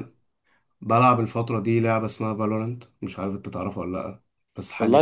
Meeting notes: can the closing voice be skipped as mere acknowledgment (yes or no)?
no